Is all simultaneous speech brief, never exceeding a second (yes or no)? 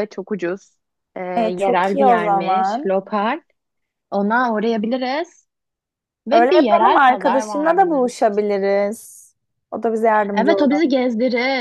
no